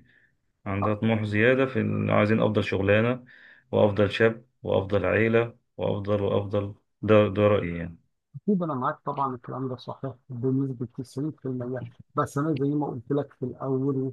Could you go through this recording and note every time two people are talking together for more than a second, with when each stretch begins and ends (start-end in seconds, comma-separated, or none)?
none